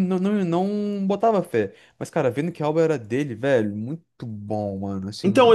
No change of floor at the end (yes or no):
no